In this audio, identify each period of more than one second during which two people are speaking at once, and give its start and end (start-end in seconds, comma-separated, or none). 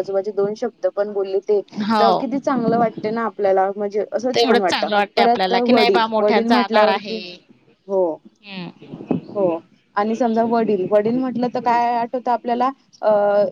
4.3-7.2